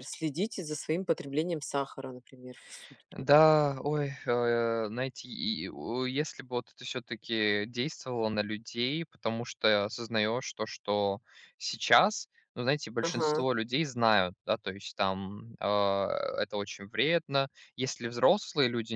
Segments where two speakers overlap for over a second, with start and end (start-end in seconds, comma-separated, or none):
none